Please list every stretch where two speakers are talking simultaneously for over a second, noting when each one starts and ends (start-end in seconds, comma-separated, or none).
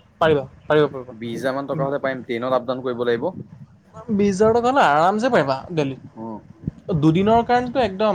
none